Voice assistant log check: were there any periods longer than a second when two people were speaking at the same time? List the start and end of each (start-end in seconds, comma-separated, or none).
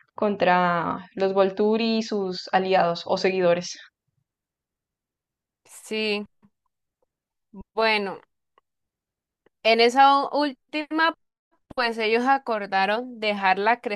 none